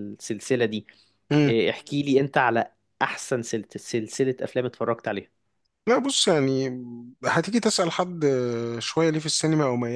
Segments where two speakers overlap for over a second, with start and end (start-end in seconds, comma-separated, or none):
none